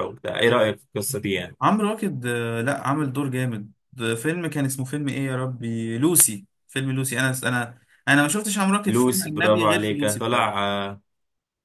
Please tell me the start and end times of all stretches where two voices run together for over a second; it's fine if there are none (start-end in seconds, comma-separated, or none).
8.9-10.6